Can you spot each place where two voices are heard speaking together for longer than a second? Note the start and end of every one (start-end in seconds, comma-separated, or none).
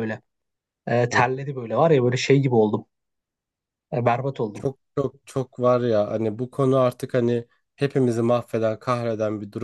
none